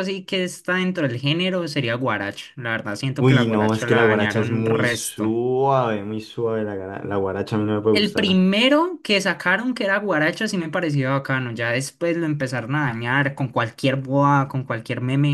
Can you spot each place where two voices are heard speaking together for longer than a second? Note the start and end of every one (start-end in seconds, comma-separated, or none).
3.2-5.3